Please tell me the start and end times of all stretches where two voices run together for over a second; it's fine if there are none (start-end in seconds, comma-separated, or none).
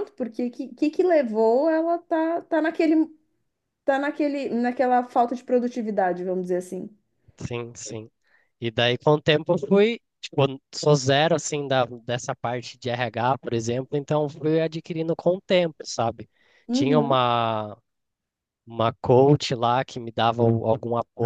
none